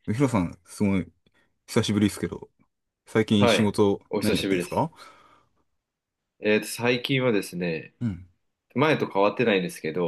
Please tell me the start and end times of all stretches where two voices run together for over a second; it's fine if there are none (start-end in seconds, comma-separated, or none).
3.4-4.9